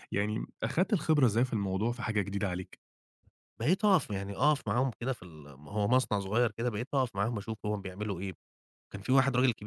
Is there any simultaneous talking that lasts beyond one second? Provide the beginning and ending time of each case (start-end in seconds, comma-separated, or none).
none